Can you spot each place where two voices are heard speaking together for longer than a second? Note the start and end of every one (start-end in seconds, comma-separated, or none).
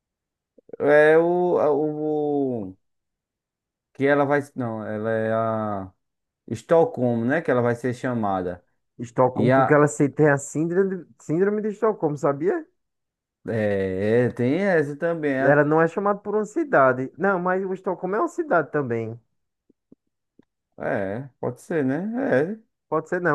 none